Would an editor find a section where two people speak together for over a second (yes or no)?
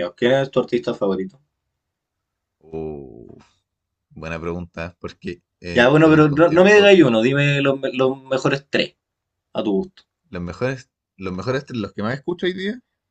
yes